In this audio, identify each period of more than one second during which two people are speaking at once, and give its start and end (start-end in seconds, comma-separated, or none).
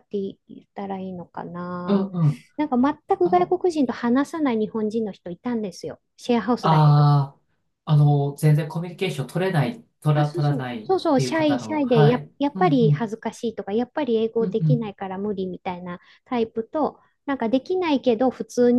10.1-13.1